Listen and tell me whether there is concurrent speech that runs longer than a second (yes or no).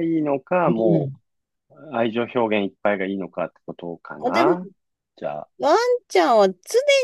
no